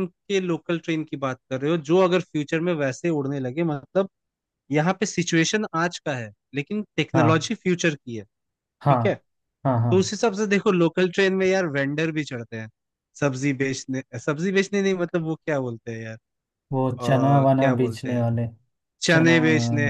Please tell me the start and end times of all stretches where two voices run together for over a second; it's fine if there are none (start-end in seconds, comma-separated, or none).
16.8-18.3